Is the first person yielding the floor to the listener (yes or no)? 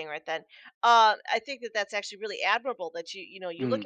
no